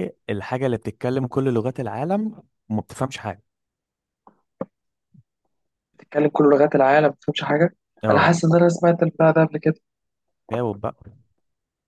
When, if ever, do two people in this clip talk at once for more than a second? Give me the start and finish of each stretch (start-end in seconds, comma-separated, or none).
none